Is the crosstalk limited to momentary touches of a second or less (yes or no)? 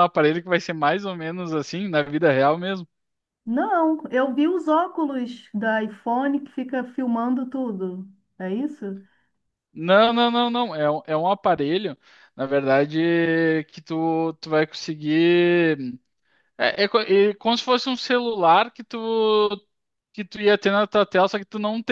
yes